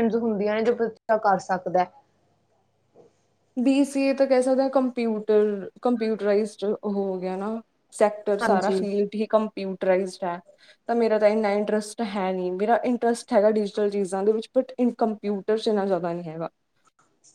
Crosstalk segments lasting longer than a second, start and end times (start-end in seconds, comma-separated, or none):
none